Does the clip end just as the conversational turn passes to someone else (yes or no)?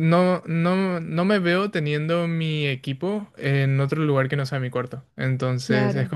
no